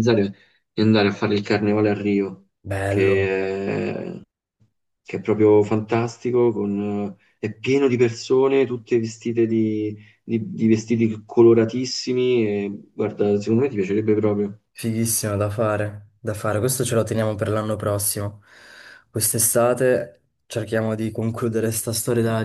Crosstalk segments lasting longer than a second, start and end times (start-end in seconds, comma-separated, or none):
none